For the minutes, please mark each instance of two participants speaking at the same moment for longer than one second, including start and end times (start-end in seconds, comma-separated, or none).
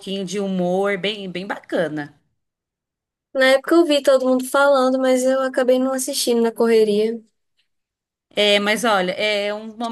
none